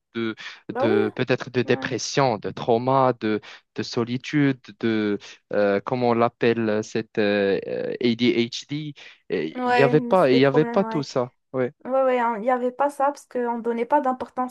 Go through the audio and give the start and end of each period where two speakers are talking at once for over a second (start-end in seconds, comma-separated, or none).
9.6-11.1